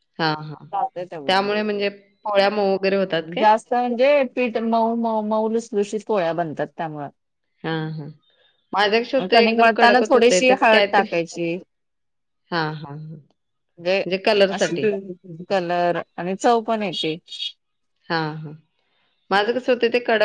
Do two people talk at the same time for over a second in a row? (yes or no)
yes